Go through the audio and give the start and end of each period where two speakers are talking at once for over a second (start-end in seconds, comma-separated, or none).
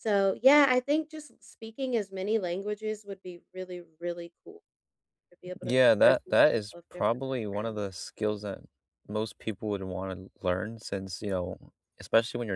5.6-7.9